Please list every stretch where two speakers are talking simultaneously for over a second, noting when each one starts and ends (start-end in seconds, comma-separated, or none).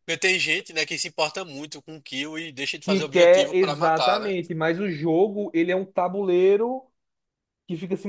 2.8-4.3